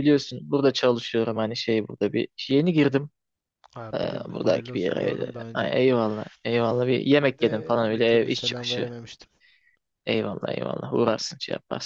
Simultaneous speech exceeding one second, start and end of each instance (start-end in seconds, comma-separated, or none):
3.9-5.7, 7.4-8.9